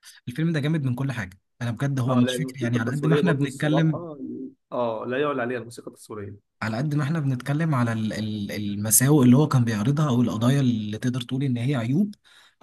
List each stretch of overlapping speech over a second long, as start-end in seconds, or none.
2.1-4.0